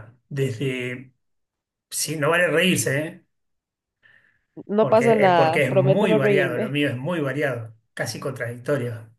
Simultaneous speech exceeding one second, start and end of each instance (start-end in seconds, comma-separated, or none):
4.8-6.8